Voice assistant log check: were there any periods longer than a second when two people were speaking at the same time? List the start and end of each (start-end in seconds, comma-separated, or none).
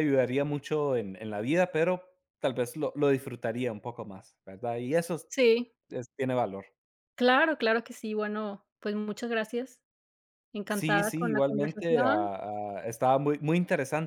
10.7-12.3